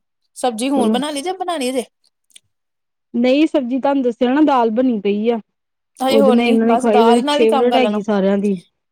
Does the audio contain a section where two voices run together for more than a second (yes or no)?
yes